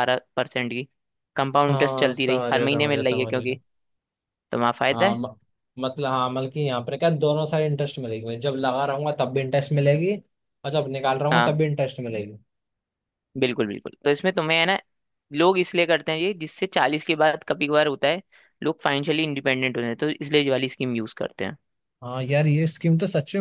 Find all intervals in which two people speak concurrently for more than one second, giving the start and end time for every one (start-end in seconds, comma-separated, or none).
1.7-3.6